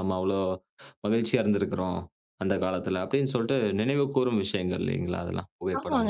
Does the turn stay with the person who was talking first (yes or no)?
no